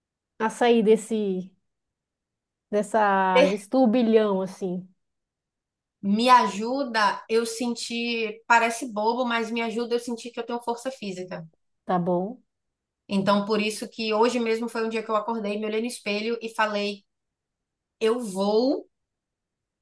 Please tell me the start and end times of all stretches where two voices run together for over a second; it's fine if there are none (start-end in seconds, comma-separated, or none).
none